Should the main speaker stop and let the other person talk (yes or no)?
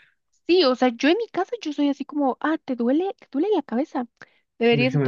no